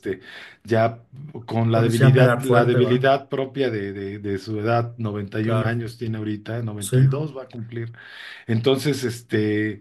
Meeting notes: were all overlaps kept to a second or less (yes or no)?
no